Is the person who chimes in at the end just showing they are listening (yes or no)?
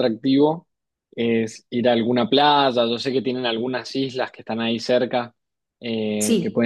yes